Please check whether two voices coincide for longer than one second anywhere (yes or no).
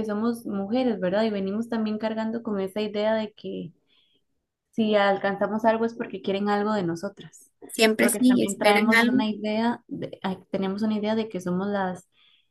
yes